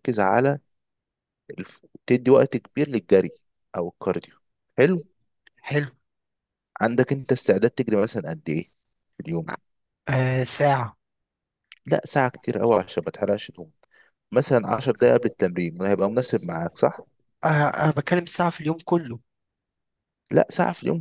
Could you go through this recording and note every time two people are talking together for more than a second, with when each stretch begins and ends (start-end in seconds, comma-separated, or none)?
none